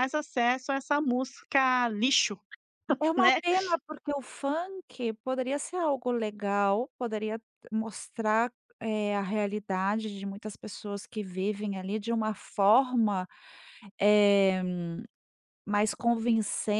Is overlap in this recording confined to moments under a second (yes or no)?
yes